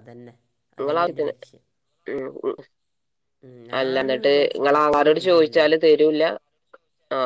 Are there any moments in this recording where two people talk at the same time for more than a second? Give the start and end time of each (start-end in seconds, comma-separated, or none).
3.8-5.6